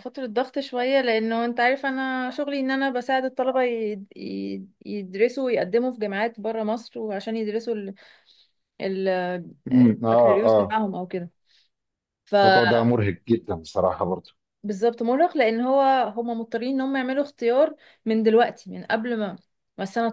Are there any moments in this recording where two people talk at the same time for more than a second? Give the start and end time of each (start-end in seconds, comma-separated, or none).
none